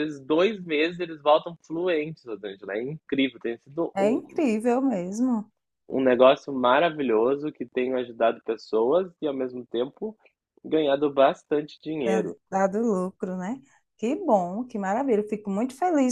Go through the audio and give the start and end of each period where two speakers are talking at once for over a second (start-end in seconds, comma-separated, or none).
none